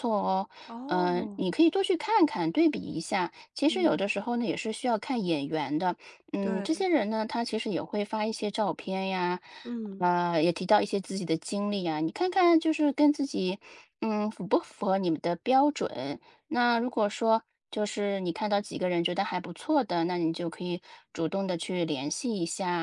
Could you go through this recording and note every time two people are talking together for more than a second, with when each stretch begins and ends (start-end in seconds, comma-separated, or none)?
none